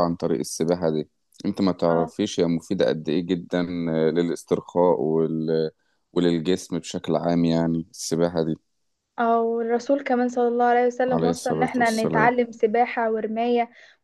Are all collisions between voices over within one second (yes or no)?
no